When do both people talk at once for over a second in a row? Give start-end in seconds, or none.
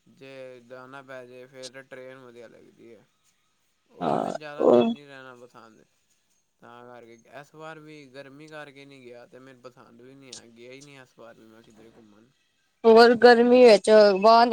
none